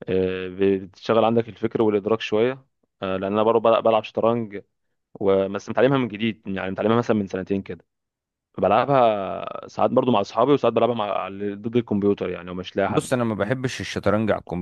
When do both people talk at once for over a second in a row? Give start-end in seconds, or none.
none